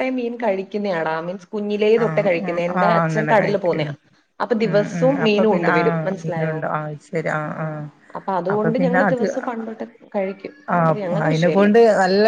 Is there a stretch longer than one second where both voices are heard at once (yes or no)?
yes